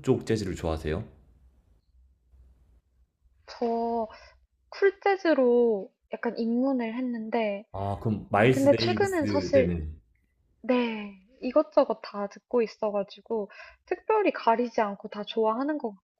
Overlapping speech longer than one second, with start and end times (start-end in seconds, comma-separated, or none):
8.5-9.8